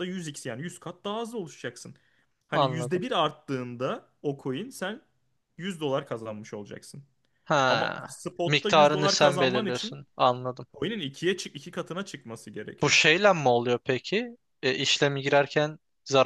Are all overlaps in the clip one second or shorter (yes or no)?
no